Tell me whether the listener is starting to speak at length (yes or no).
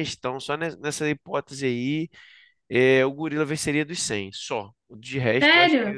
yes